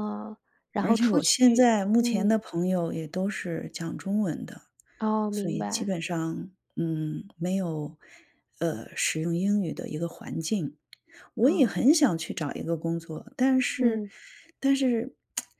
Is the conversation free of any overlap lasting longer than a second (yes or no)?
no